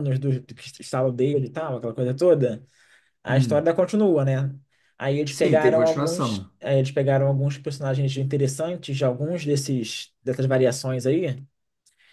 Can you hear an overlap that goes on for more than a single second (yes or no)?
yes